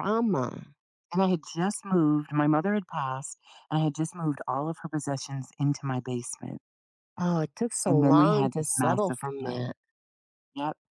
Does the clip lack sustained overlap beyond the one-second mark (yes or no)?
no